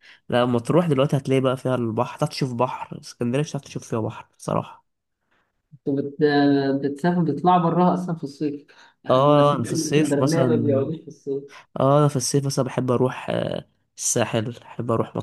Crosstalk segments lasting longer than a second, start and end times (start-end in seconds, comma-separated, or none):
9.1-10.9